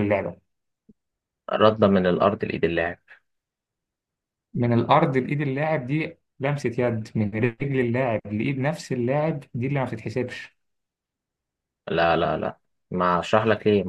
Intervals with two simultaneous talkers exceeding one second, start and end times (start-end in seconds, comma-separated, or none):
none